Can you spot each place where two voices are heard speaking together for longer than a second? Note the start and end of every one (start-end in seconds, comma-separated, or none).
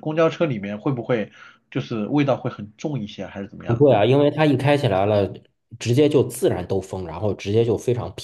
none